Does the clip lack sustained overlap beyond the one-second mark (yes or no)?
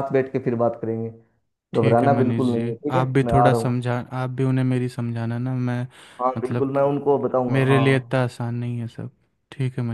no